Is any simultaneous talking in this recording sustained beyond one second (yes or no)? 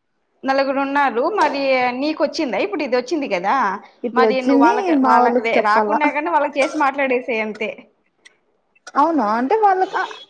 yes